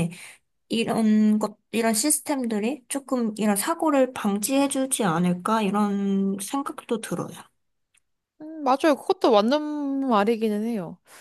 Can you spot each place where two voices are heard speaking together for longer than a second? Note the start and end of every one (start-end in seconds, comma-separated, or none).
none